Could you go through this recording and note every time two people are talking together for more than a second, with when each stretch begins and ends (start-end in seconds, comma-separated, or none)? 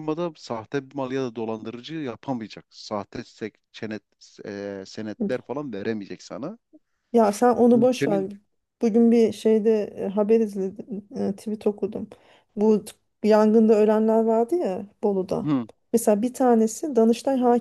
none